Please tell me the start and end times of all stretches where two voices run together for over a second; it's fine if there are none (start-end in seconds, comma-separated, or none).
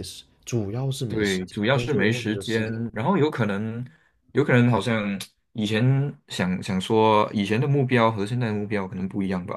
1.1-2.8